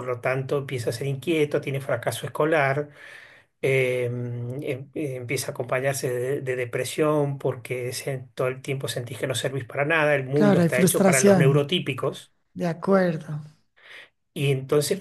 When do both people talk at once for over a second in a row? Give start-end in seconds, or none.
10.3-11.7